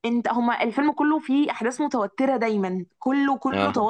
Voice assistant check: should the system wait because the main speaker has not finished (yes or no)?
yes